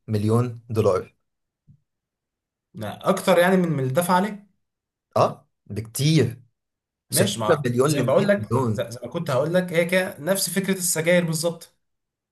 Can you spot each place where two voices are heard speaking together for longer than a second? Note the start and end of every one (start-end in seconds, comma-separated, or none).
7.1-8.9